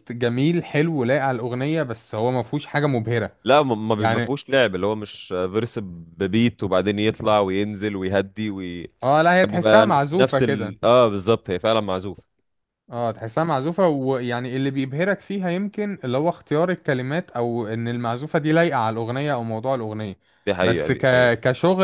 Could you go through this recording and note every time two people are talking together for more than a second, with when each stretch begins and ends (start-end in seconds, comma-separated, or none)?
9.4-10.8